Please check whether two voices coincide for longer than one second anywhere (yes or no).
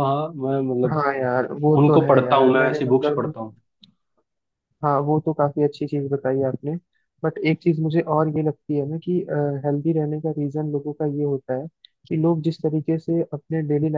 yes